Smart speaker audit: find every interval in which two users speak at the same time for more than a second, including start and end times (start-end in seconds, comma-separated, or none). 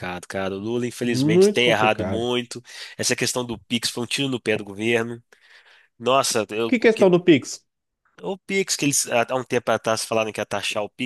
1.0-2.3